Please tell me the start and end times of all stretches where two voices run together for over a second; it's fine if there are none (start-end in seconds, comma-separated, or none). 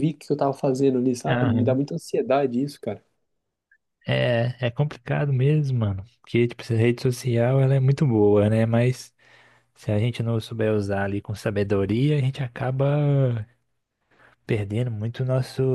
none